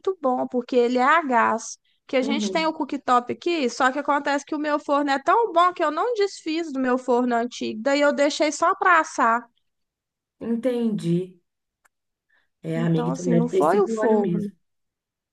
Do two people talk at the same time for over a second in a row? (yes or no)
yes